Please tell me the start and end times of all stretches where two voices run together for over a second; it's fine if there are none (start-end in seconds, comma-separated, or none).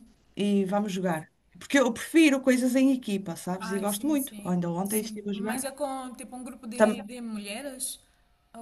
3.6-5.7